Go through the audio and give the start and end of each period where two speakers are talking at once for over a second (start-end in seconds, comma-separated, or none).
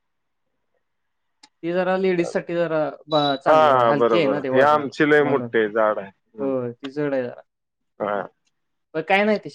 3.5-5.5